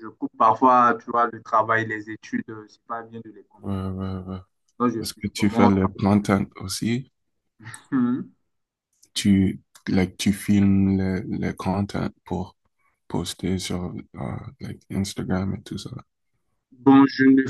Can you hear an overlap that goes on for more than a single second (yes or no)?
yes